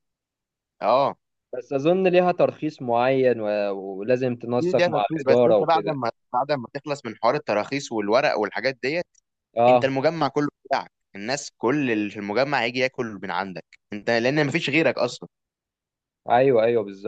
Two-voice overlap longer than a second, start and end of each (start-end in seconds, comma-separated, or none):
4.6-6.0